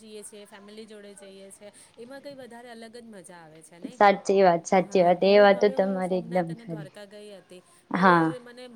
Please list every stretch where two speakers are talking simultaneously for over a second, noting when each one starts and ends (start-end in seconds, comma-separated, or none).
4.9-6.9